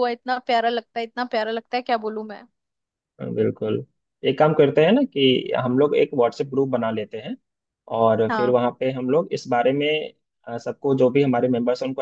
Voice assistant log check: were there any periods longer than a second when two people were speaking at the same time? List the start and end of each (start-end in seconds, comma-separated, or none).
none